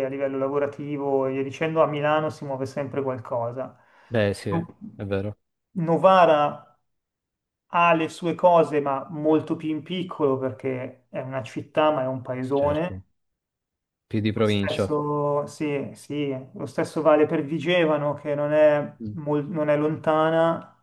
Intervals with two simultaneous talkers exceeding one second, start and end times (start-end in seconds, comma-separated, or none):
none